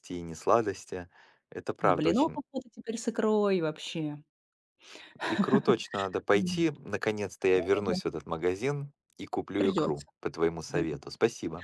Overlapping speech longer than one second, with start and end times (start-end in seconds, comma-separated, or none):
none